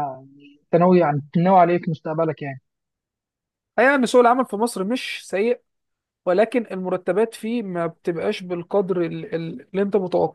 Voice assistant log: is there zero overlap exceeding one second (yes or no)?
yes